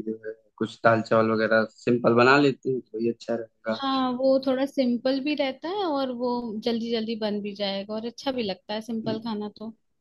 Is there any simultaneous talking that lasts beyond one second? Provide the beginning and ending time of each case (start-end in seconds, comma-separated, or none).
none